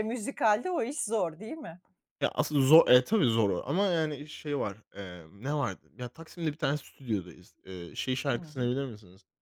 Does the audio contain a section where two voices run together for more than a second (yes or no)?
no